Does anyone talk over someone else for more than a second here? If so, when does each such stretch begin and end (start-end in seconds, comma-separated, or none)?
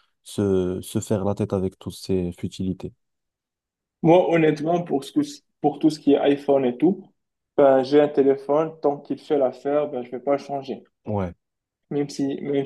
none